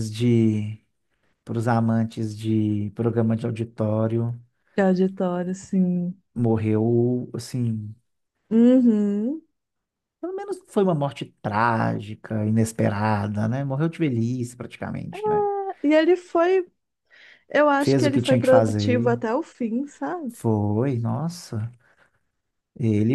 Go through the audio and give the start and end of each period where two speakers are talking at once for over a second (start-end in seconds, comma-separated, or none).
17.8-19.2